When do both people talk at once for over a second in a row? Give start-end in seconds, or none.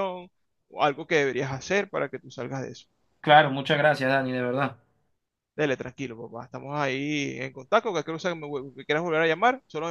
none